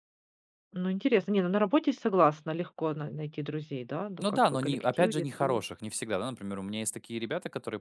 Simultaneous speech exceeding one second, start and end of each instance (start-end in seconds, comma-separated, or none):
4.2-5.6